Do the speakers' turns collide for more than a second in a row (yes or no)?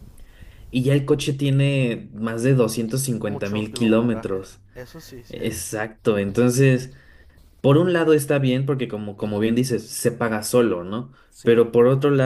yes